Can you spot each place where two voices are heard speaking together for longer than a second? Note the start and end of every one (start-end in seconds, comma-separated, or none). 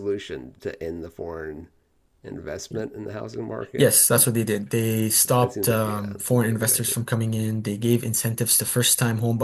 5.4-7.0